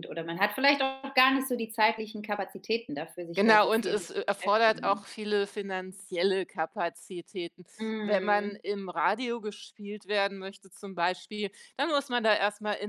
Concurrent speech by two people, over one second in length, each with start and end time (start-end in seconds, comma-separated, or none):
3.4-5.0